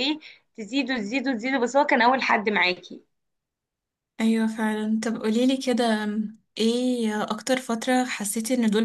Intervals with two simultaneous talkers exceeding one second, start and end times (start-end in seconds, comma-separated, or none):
none